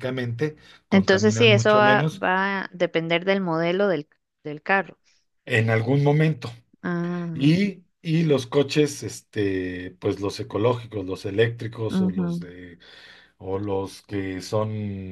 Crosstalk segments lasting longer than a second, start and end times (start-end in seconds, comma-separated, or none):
0.9-2.2